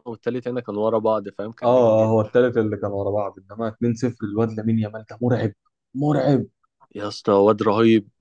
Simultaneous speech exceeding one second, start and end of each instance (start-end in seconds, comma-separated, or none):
none